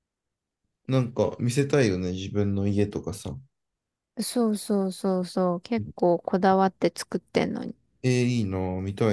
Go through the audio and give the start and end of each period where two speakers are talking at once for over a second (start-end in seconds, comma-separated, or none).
none